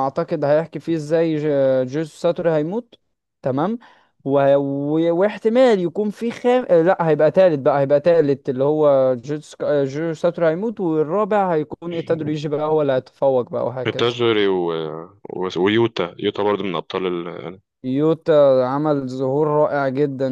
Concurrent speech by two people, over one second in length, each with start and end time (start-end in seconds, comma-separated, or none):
none